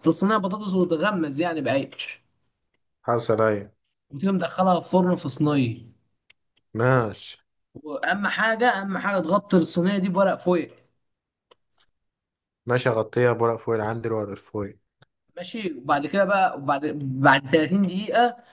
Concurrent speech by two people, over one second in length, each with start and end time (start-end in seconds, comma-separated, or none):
none